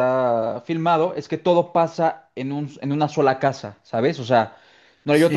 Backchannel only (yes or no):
yes